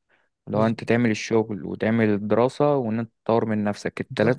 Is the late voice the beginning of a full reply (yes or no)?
yes